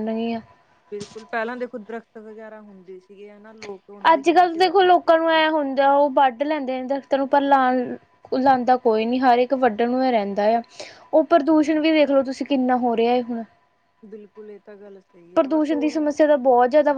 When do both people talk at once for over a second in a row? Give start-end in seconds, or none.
4.1-5.4